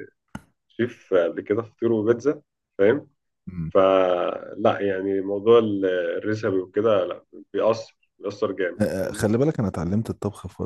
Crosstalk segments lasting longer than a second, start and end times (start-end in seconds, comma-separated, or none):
none